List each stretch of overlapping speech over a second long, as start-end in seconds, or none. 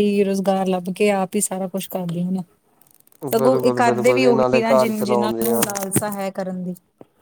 3.3-5.6